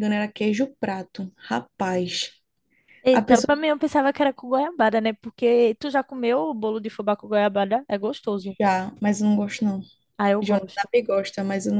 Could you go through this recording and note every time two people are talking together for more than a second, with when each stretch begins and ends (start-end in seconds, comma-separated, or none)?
none